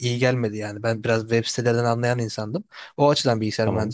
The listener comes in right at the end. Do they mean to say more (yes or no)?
no